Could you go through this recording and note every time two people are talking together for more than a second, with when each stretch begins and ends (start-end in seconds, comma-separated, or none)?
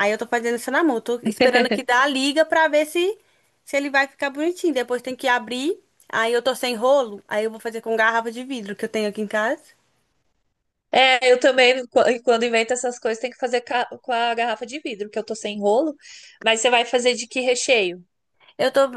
none